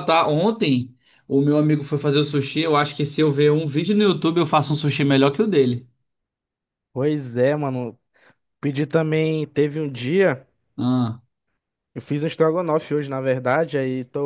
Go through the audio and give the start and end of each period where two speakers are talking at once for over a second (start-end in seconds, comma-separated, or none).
none